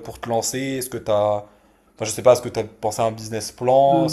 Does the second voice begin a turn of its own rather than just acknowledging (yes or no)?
yes